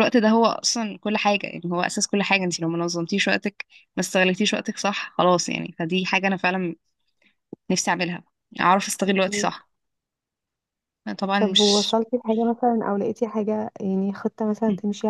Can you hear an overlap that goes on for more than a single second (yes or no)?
no